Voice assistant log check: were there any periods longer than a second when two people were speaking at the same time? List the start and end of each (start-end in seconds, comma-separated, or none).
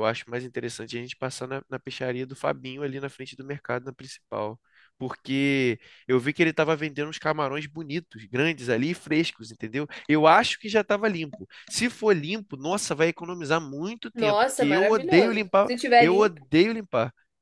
14.1-16.4